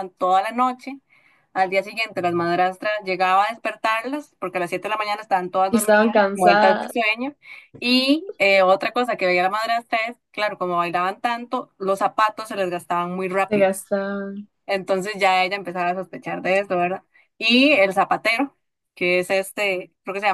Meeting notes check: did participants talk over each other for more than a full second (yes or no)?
yes